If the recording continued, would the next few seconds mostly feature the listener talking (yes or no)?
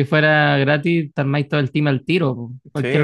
yes